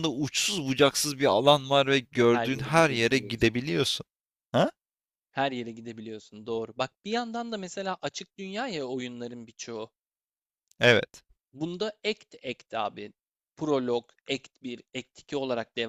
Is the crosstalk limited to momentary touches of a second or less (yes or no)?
no